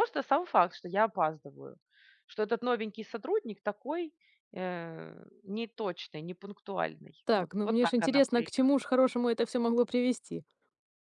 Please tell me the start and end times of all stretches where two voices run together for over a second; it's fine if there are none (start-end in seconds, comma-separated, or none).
7.2-8.8